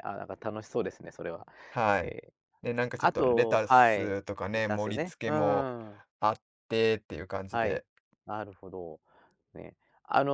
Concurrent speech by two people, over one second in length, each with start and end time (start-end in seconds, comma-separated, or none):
3.0-5.7